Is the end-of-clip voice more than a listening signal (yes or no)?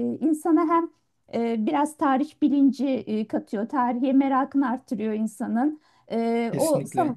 no